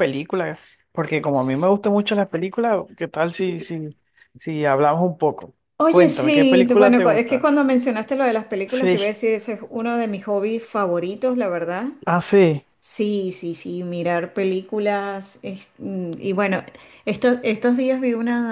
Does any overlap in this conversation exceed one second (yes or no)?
yes